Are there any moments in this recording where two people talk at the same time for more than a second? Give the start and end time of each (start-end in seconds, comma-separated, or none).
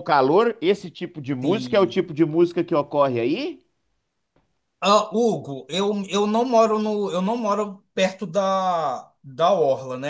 none